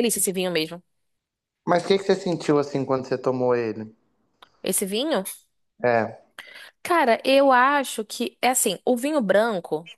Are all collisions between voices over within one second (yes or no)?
yes